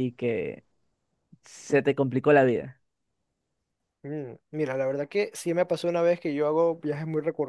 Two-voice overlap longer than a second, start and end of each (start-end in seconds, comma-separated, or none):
none